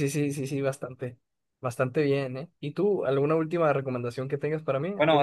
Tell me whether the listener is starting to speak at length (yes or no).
yes